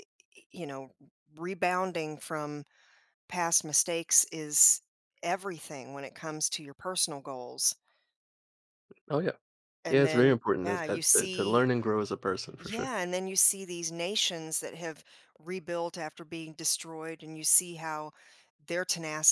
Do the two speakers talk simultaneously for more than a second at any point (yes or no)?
yes